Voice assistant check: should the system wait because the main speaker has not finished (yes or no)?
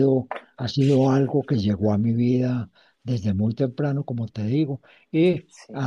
yes